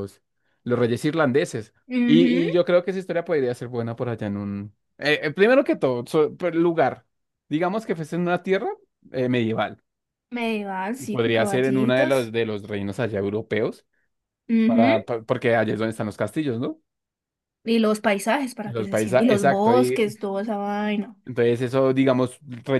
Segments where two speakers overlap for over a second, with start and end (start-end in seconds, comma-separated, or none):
11.0-12.3, 18.6-20.1